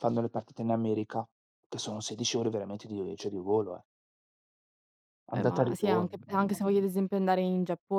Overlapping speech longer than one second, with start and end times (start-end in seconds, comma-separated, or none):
5.3-6.8